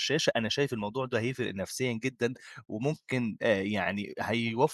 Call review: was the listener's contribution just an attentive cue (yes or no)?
yes